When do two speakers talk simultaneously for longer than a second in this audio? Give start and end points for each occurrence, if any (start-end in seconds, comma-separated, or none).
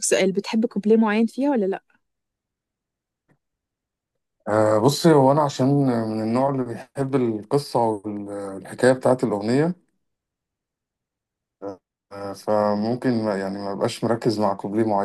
none